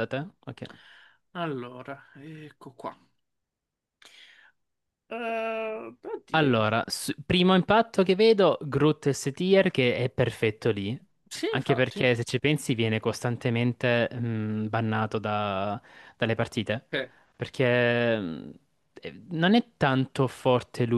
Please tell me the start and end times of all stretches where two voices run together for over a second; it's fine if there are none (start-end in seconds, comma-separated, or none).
none